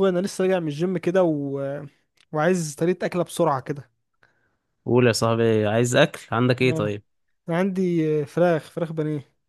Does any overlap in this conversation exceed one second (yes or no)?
no